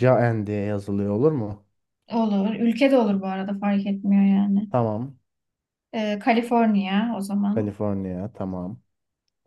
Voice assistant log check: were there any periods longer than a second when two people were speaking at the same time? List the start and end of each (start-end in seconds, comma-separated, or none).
none